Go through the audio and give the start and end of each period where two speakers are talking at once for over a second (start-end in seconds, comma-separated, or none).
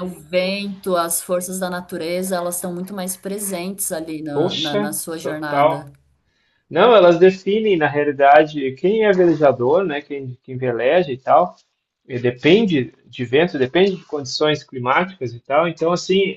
4.3-5.9